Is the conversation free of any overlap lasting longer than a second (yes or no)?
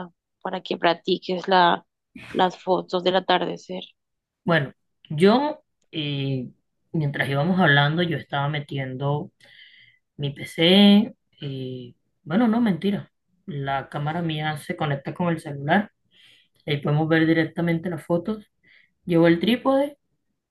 yes